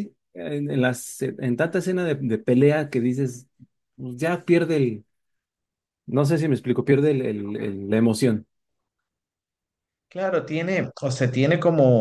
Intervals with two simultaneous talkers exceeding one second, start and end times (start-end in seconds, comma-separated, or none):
none